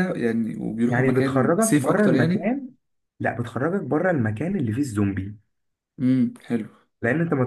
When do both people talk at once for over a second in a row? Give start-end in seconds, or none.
0.9-2.6